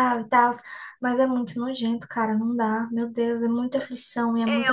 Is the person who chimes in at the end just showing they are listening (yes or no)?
no